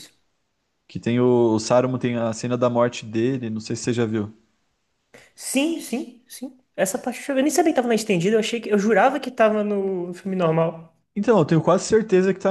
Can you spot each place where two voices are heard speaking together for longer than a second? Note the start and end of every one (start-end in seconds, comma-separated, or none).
none